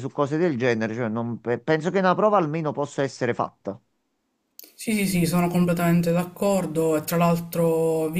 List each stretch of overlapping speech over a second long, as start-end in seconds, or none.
none